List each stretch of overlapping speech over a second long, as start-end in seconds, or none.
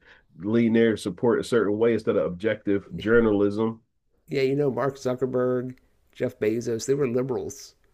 none